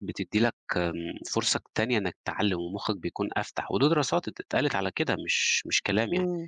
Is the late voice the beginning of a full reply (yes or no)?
yes